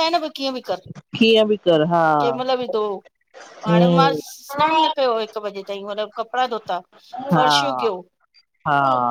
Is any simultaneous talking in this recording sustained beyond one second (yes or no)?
no